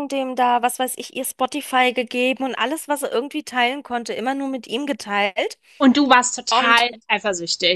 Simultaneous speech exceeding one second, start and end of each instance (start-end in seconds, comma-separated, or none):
none